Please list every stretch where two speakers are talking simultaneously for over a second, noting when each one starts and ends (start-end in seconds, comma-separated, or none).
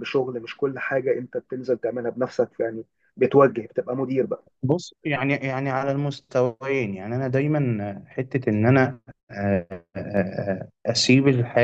none